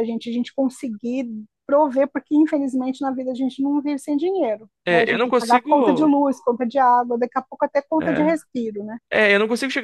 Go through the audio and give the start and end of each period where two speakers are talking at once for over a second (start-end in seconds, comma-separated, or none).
4.8-6.2